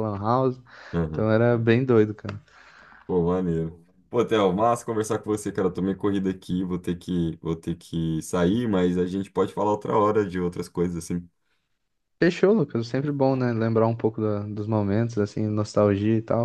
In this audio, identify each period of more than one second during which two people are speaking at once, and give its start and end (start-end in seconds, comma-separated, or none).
none